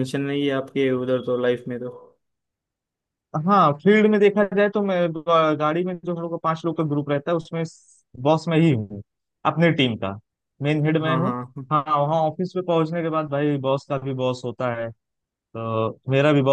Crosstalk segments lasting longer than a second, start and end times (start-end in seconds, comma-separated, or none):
none